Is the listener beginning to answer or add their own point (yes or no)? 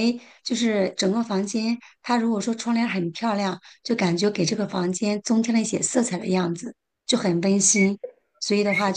no